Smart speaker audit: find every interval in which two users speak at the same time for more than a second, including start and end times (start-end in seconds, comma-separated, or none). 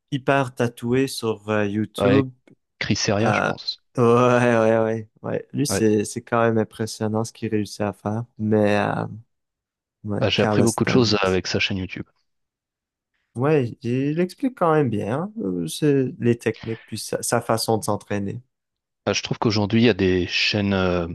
10.2-11.4